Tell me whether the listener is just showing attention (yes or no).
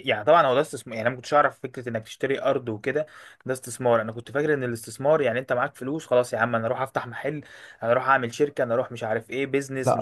yes